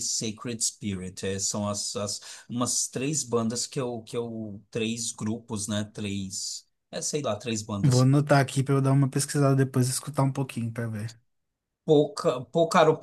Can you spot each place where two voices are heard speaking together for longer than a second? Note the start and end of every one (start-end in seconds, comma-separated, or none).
none